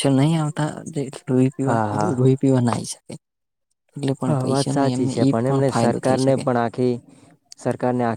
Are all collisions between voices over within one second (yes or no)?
no